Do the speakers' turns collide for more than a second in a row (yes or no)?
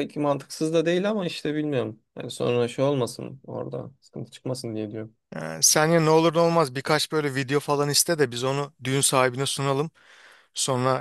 no